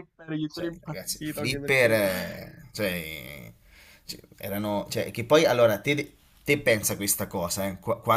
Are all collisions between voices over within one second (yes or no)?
no